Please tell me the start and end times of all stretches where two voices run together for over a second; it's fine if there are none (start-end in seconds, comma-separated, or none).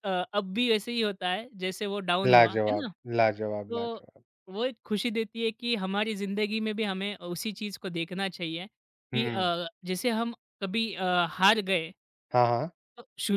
none